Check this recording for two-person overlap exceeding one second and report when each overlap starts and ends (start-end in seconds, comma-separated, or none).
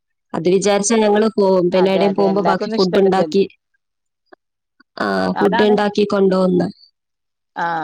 1.8-3.4